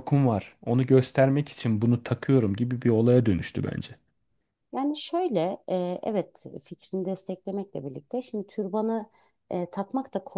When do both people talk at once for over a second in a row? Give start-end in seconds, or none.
none